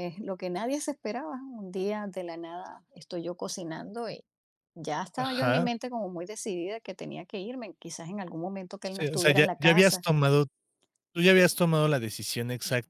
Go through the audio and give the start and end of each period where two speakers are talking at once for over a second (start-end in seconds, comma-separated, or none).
8.8-10.1